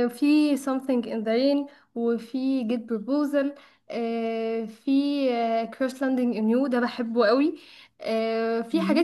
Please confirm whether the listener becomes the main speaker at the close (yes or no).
no